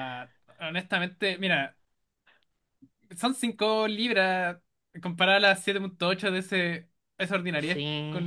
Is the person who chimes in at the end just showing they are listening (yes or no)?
no